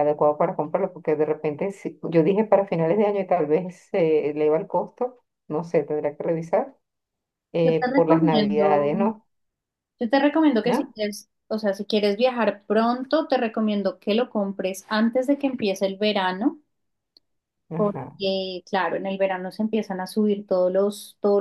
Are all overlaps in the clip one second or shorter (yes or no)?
no